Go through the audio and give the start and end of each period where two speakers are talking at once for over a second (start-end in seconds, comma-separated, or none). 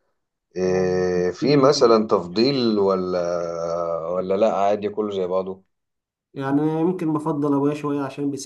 none